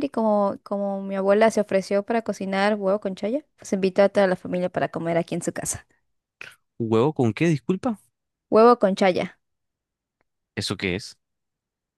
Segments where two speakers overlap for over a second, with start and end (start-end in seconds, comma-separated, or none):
none